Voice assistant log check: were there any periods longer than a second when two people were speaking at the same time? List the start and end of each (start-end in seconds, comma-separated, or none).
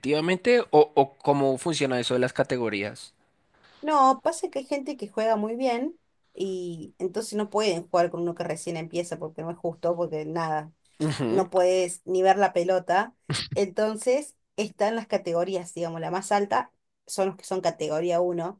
none